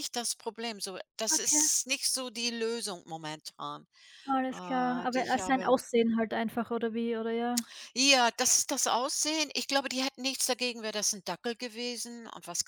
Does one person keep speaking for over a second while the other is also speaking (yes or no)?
yes